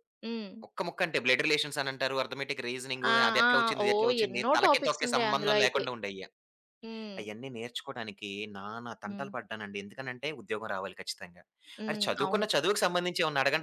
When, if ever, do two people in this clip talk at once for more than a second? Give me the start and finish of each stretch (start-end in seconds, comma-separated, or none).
3.1-5.8